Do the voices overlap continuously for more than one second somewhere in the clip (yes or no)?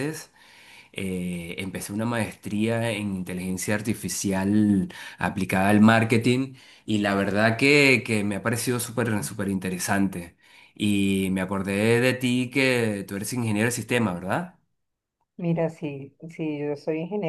no